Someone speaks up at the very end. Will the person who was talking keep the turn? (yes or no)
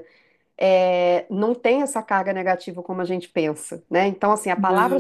yes